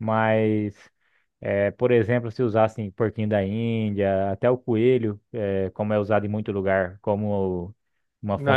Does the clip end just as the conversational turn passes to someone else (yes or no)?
yes